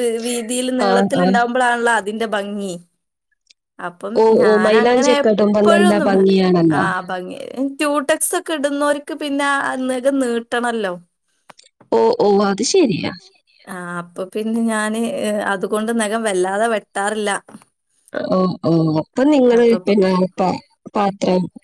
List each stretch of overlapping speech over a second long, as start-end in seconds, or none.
4.2-6.1